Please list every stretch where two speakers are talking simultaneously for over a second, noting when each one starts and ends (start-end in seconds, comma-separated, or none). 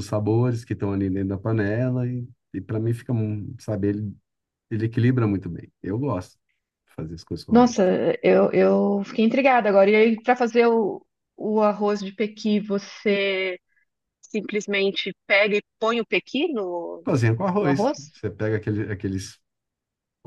none